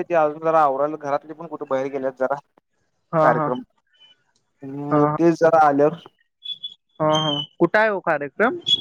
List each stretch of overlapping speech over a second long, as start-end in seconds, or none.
none